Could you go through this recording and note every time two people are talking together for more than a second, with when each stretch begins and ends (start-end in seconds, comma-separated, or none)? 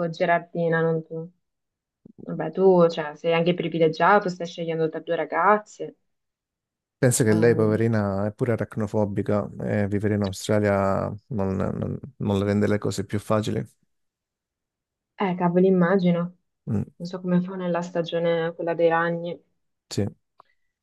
none